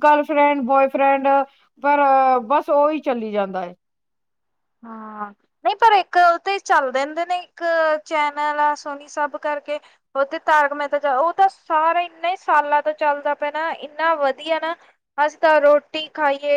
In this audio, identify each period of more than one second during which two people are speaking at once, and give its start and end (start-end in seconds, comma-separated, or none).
none